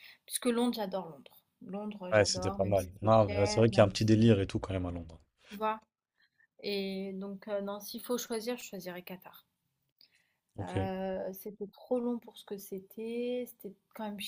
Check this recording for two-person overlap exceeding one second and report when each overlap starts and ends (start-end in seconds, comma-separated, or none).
2.1-4.1